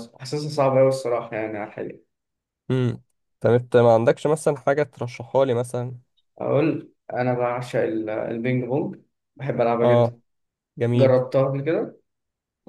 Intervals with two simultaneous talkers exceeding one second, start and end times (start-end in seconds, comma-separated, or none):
none